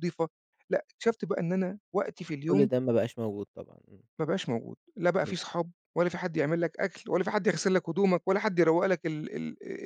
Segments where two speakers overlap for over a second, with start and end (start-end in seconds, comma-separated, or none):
none